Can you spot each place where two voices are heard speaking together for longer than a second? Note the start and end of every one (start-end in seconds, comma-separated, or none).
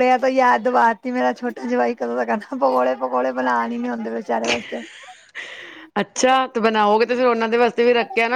none